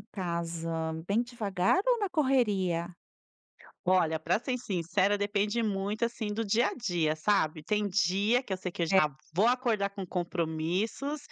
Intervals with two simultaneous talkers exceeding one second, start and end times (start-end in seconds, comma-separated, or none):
none